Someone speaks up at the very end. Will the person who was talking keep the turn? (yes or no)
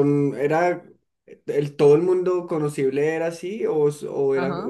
no